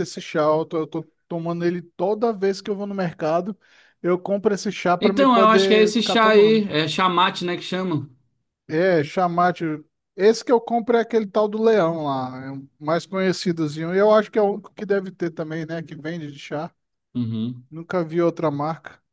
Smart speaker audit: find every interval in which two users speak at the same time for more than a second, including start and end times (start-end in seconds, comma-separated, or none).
5.0-6.7